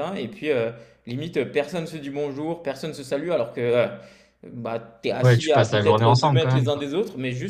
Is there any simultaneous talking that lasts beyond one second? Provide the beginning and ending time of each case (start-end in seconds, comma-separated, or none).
5.2-6.8